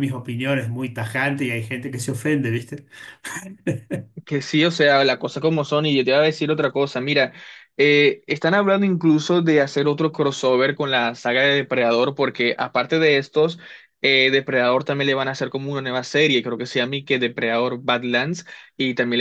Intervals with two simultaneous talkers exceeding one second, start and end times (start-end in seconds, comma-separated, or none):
none